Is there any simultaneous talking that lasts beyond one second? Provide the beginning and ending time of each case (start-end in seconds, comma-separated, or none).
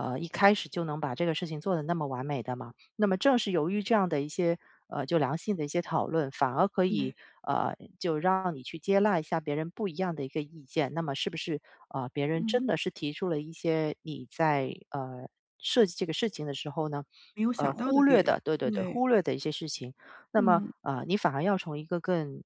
17.6-19.0